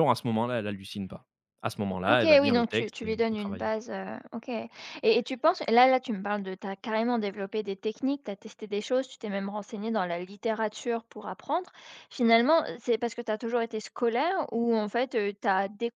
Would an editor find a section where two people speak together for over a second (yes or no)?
yes